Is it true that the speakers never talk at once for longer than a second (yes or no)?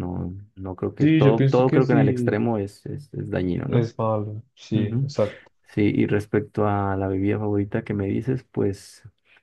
no